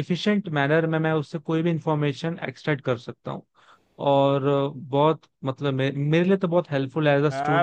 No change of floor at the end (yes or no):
no